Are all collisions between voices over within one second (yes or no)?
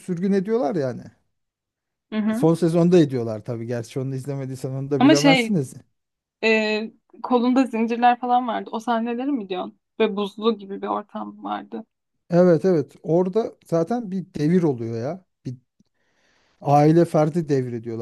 yes